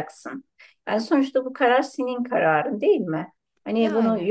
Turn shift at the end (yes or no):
no